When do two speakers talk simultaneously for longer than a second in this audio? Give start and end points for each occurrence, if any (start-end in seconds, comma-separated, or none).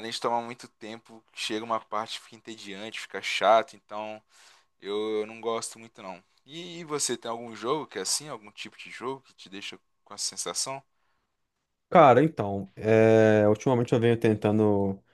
none